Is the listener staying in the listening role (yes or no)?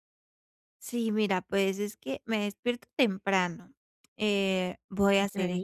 yes